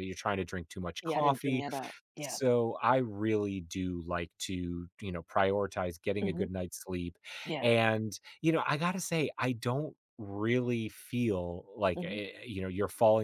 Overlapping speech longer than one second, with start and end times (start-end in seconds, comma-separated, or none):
none